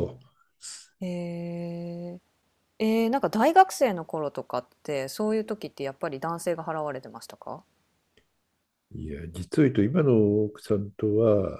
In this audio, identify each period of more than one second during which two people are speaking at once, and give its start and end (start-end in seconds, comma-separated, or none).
none